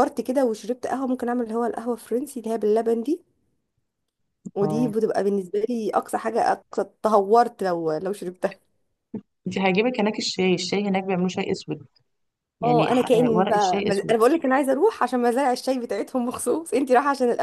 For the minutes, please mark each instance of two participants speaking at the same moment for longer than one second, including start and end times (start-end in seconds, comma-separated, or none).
12.6-14.2